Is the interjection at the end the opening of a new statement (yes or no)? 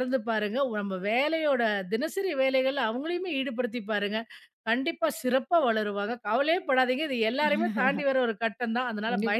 yes